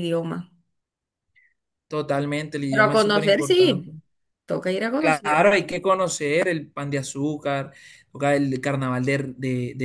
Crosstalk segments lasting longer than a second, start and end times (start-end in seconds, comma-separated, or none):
2.7-3.9